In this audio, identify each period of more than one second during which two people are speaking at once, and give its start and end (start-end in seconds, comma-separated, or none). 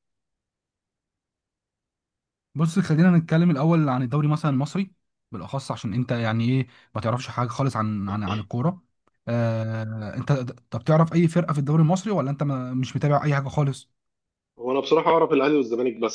none